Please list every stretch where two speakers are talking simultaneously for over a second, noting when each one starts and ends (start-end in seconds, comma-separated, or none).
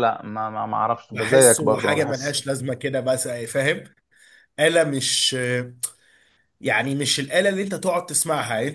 1.1-2.4